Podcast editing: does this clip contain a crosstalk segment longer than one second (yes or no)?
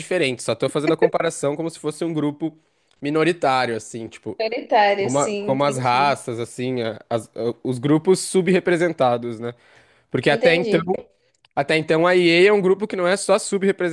yes